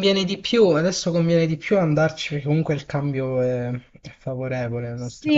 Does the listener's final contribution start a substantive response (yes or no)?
yes